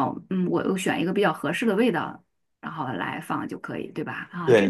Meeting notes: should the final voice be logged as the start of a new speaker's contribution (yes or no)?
yes